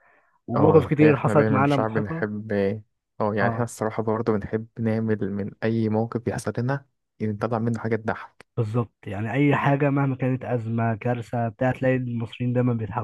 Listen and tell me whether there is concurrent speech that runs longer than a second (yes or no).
yes